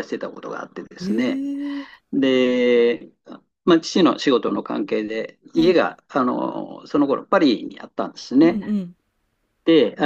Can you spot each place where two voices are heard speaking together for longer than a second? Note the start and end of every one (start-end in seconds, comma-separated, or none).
none